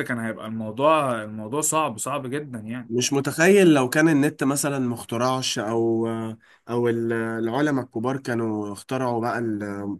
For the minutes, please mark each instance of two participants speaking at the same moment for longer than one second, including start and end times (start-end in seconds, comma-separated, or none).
none